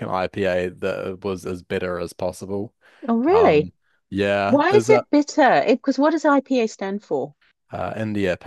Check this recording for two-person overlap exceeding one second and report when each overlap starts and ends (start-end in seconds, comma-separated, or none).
none